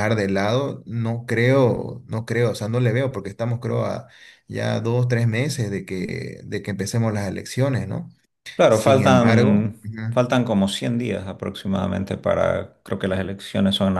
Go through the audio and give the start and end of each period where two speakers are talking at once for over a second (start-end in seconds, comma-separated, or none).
8.7-10.0